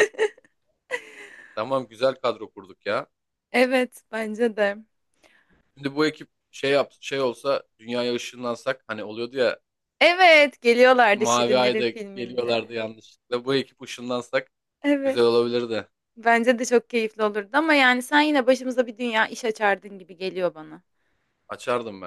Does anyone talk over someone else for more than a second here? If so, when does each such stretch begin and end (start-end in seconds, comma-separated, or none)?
11.1-12.8